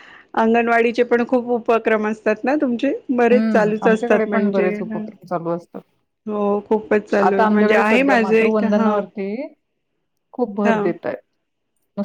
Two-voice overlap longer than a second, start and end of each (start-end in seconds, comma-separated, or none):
3.3-5.0, 7.3-8.9